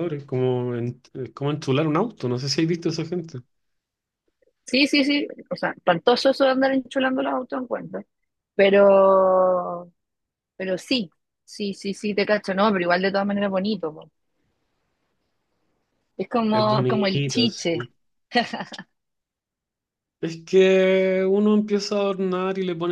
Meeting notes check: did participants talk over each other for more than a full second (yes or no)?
yes